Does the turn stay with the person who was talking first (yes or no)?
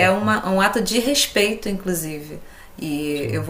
yes